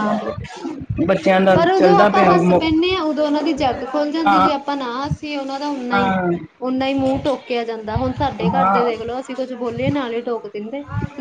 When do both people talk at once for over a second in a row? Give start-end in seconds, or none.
none